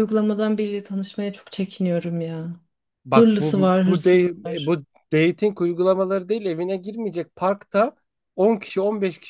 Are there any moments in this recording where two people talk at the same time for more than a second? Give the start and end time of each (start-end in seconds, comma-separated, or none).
3.1-4.8